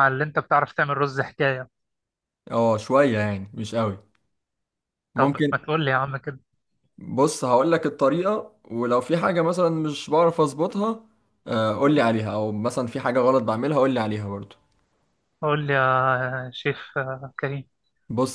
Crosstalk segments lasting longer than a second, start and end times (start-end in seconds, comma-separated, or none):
none